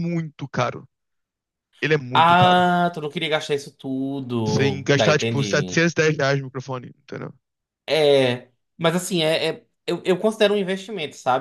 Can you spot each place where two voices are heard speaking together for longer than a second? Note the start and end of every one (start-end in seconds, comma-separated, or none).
4.5-5.8